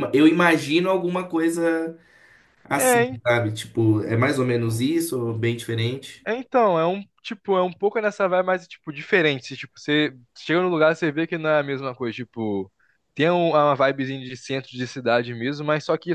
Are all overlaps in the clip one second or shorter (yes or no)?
yes